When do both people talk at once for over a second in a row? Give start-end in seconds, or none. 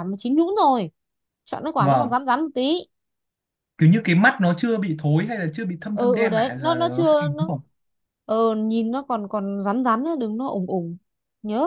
5.9-7.5